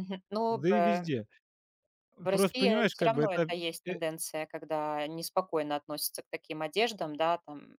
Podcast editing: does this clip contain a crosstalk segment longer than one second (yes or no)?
yes